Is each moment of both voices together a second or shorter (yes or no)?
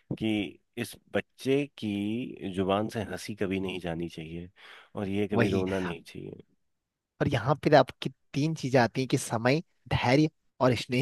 yes